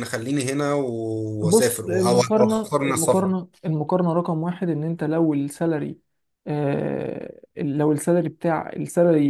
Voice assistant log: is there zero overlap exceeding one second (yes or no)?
no